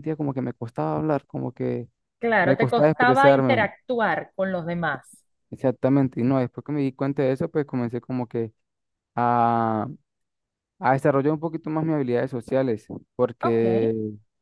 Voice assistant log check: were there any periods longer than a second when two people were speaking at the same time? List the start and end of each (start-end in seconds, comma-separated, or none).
2.4-3.7